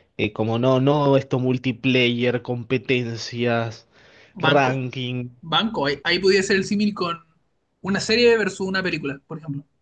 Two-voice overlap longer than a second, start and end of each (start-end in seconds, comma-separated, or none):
none